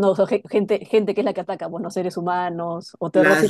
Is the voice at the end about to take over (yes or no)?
yes